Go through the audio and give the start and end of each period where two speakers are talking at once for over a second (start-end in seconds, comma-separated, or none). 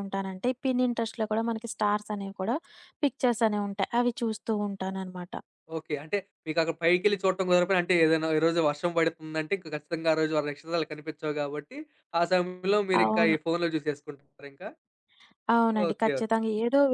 none